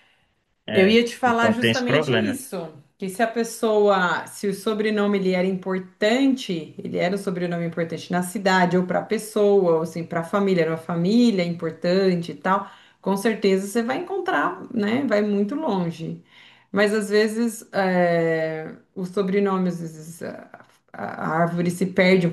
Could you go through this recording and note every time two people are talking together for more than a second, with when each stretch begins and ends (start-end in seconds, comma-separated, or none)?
0.7-2.4